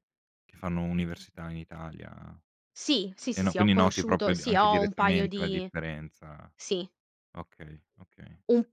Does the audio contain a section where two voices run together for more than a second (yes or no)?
yes